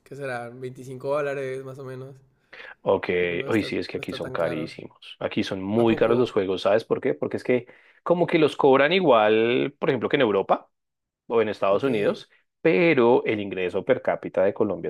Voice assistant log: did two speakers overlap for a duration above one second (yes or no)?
yes